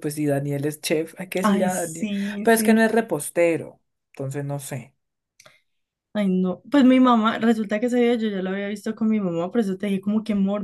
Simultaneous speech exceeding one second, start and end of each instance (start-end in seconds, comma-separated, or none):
1.4-2.9